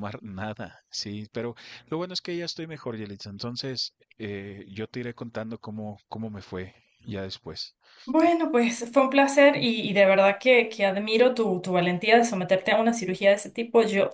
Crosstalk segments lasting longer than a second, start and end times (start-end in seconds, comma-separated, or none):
none